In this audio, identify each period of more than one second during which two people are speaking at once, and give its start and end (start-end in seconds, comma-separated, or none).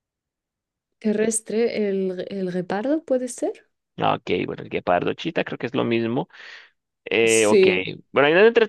none